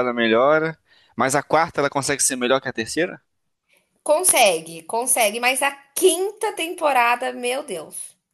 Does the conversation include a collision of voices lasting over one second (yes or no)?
no